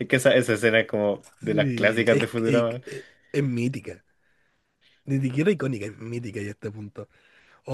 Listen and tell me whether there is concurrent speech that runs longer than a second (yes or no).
yes